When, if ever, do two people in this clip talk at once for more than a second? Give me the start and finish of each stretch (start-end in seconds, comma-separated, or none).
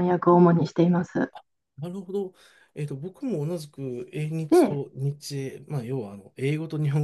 none